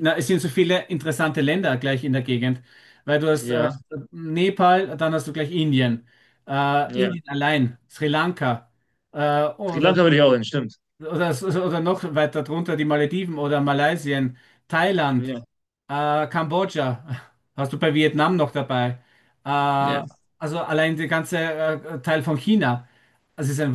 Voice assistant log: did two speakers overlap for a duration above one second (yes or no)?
no